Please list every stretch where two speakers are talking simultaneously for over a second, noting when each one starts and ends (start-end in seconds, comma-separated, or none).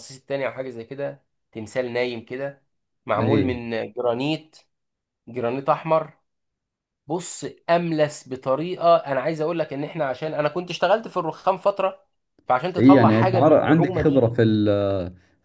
12.8-14.3